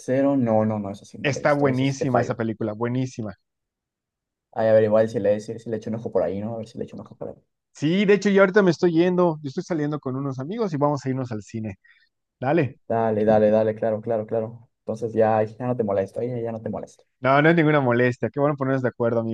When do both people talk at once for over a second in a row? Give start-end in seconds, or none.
1.2-2.4